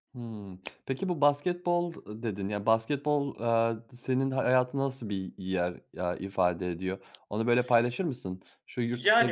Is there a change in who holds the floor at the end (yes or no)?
yes